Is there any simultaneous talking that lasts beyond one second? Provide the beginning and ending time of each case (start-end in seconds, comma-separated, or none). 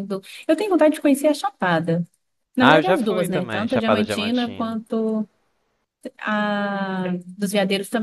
2.6-4.8